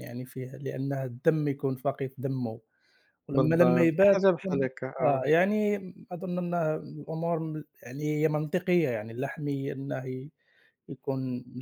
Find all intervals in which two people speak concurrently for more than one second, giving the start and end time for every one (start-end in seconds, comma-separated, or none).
3.3-5.2